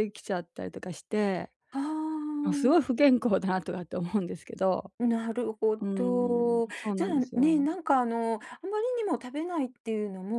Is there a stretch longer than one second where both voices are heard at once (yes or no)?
yes